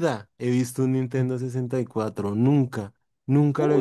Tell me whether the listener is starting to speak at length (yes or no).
yes